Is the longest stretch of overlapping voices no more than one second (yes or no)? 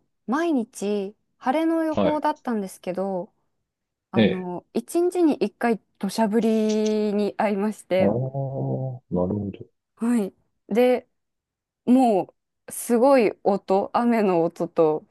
yes